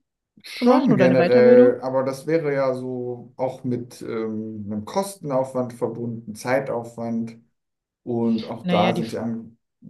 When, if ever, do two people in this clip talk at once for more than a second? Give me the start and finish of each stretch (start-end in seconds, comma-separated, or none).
0.5-1.8